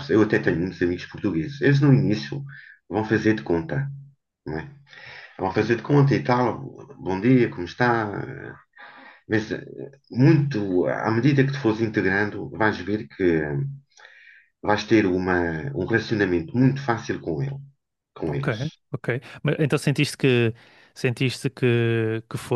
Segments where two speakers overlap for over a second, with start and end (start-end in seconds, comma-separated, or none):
none